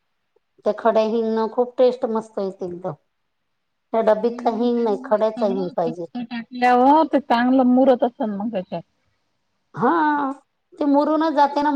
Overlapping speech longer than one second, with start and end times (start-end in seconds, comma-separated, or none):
4.3-5.7